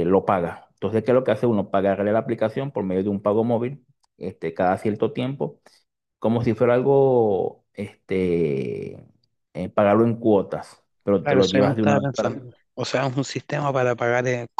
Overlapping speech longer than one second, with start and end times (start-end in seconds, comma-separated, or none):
11.2-12.4